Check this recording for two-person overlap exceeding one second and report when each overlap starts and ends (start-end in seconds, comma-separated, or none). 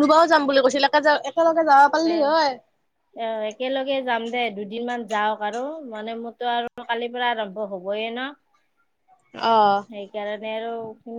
none